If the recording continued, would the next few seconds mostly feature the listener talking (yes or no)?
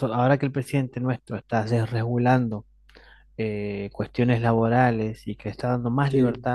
no